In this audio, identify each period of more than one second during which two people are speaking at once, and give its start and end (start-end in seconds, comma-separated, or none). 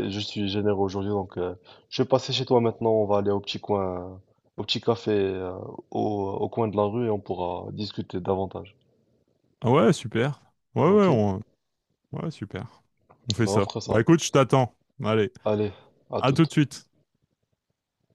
none